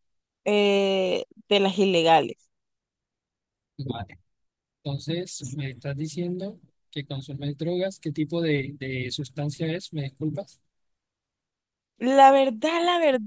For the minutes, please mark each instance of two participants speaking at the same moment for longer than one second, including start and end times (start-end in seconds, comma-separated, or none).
none